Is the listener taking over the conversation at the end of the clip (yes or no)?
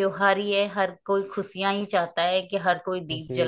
yes